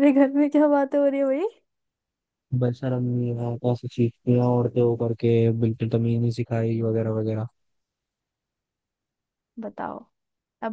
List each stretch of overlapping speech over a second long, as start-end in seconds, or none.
none